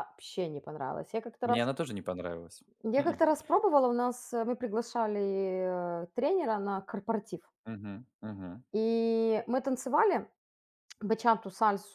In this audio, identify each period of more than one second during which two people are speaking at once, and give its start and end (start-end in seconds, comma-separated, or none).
none